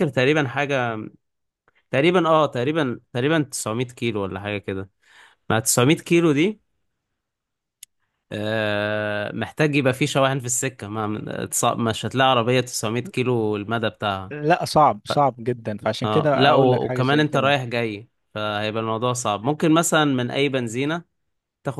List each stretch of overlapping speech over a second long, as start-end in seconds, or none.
16.0-17.6